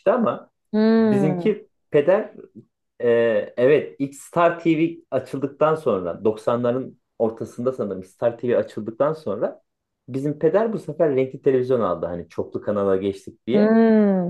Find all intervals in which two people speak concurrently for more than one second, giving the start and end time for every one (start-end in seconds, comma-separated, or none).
none